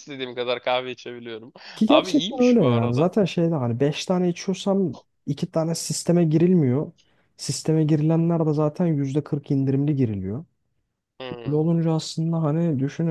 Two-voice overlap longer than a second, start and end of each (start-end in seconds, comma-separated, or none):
1.9-3.1